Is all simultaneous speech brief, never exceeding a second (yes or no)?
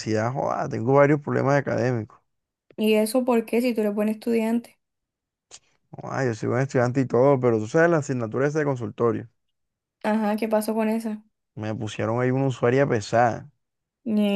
yes